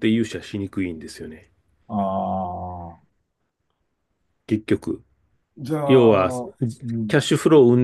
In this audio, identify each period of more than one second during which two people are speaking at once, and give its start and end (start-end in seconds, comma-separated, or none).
none